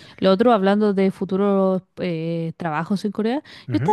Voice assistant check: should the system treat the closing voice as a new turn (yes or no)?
no